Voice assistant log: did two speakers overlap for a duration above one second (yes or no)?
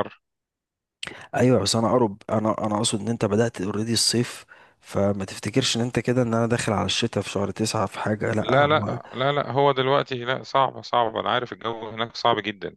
no